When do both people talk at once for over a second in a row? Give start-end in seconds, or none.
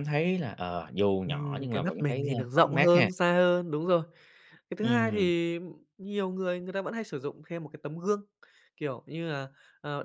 1.2-3.1